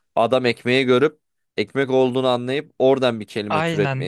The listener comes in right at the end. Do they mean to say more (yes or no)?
yes